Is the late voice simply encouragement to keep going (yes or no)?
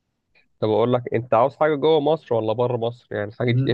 yes